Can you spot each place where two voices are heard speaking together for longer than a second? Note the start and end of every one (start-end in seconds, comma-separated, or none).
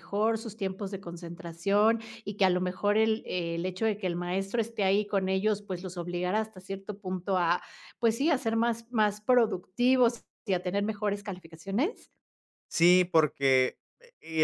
none